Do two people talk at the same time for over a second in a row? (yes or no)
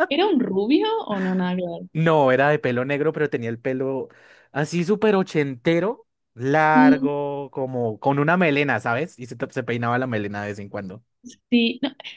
no